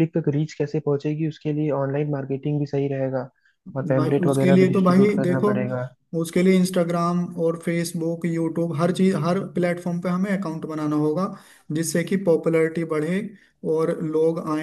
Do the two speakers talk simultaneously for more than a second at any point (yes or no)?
yes